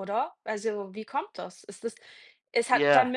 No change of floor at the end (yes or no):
yes